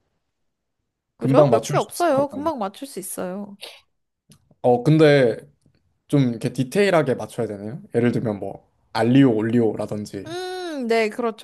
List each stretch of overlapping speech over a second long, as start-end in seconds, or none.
1.2-2.5